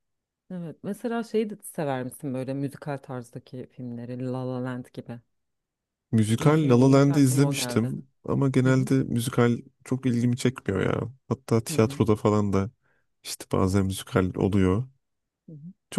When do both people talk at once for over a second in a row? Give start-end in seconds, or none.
6.4-7.9